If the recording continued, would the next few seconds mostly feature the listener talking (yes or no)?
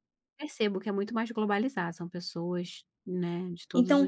yes